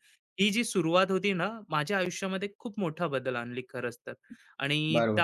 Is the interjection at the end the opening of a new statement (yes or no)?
yes